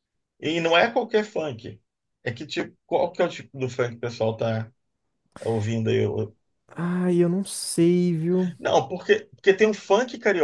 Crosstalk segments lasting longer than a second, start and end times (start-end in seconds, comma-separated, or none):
none